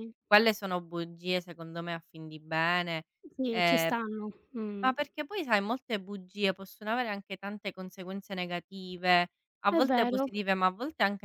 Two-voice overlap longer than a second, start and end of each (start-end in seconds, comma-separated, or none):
none